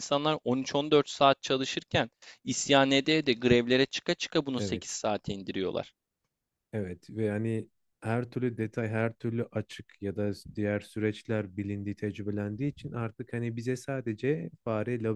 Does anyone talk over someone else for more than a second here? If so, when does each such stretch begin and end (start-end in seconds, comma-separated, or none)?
none